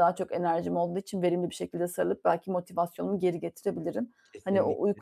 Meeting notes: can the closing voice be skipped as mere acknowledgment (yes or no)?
yes